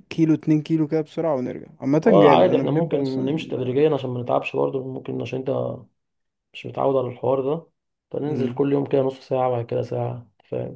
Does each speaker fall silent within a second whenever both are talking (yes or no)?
no